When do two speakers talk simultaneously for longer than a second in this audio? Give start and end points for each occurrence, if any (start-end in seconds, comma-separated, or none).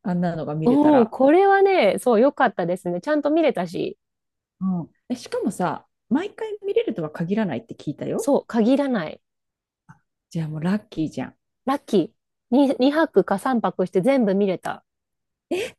none